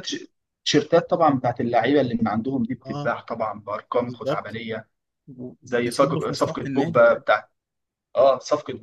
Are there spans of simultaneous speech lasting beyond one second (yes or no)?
yes